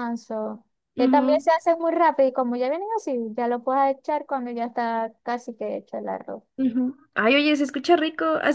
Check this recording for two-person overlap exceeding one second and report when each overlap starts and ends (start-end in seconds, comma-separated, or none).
none